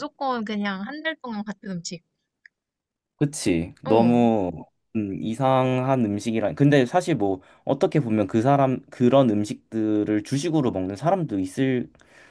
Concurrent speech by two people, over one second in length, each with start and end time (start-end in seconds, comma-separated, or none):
none